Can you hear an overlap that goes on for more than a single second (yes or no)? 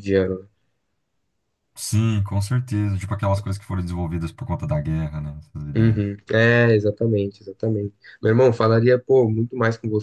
no